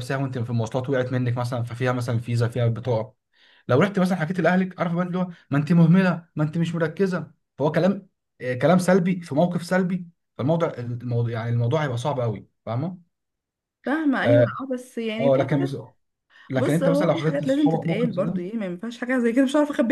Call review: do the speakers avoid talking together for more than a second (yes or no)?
no